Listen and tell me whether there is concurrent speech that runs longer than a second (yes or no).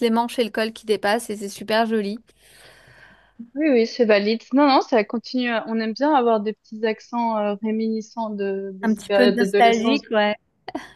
yes